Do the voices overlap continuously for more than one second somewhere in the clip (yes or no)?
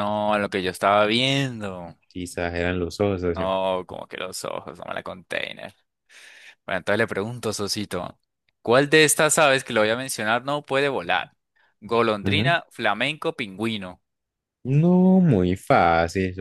no